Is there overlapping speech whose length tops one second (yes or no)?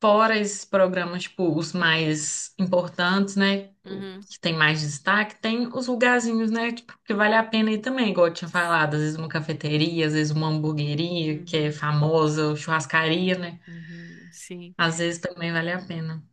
no